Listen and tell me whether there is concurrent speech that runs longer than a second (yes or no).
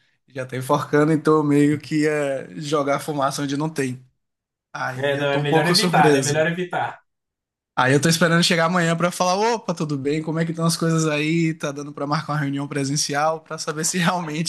yes